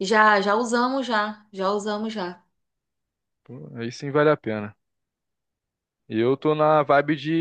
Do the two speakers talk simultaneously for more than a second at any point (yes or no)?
no